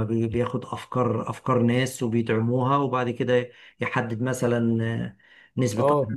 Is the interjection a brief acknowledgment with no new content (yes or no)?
no